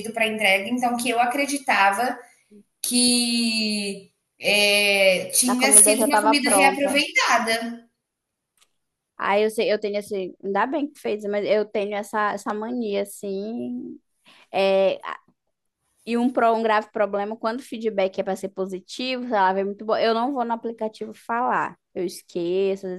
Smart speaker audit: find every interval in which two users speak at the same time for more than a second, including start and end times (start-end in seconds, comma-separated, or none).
5.5-6.9